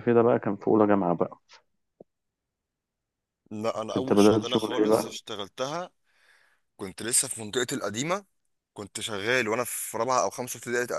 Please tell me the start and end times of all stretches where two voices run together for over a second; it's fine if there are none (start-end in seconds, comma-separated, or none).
4.0-5.2